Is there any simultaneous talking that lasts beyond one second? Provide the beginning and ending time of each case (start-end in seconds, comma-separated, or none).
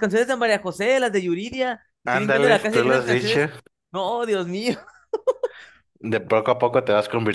2.1-3.5